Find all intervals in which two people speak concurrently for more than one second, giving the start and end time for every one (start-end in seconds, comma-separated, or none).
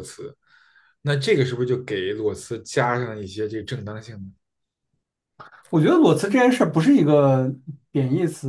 none